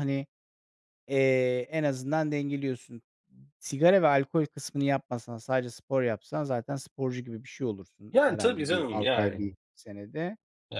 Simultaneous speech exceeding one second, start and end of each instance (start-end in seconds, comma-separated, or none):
8.1-9.5